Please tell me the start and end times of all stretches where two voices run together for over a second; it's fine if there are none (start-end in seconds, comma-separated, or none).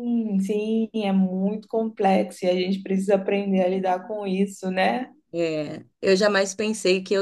none